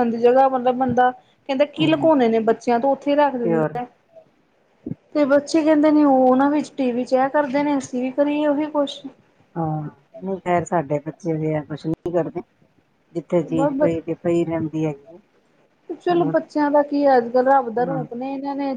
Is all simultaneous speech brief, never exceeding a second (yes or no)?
yes